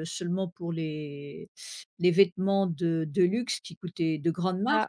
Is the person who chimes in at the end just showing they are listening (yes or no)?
yes